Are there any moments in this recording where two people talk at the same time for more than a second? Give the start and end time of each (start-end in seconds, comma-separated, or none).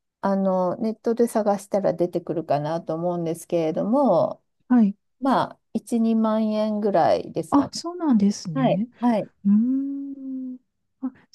none